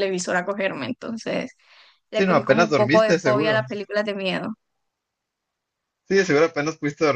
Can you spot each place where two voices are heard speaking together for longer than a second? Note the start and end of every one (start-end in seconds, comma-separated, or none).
2.1-3.7